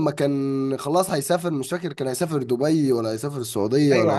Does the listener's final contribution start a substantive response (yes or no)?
yes